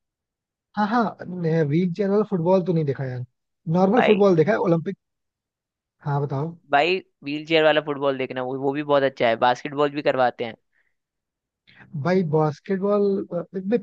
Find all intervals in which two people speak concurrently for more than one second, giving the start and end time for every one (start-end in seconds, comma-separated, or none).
none